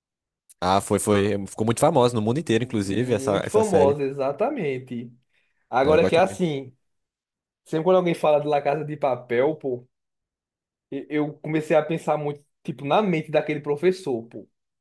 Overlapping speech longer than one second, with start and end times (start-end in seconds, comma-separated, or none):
2.5-4.0